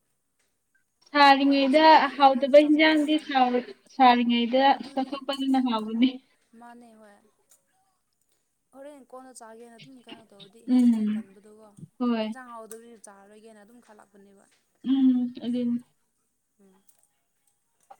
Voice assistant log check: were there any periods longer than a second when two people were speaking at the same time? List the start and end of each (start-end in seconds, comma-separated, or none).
1.2-3.4